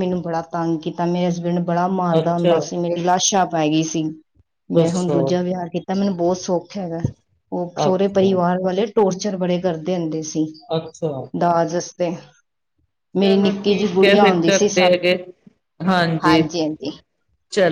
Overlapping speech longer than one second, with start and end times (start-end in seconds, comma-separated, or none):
13.2-15.0